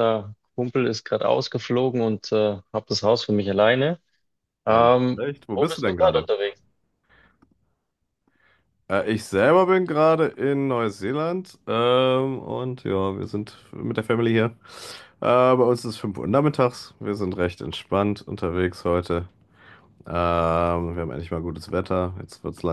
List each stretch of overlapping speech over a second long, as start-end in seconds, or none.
4.7-6.3